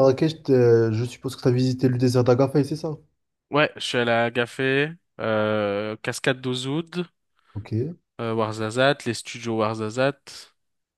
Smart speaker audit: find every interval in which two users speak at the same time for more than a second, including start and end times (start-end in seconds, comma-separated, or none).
none